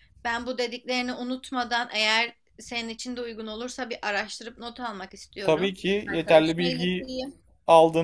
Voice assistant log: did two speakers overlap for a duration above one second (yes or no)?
yes